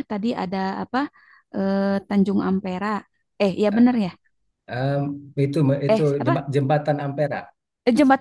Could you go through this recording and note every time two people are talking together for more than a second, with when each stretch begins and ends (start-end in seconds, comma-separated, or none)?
none